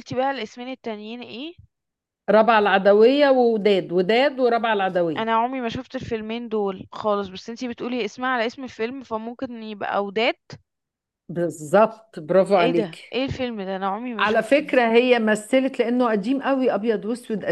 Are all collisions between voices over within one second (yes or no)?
yes